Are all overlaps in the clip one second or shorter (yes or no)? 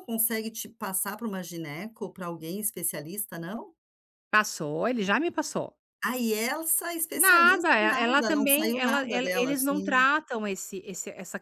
no